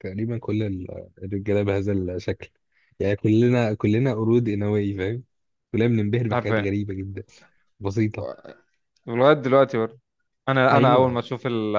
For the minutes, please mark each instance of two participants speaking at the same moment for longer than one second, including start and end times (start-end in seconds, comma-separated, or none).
none